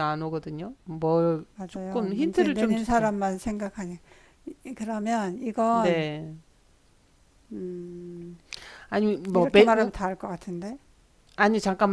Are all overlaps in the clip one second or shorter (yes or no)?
no